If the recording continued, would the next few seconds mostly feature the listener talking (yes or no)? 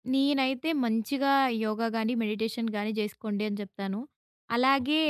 no